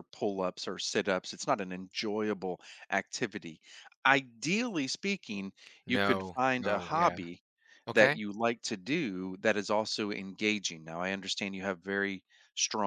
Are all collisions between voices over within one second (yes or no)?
no